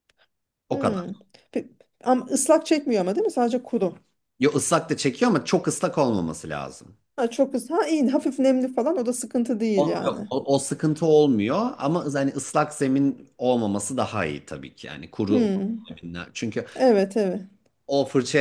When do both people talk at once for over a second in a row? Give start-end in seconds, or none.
none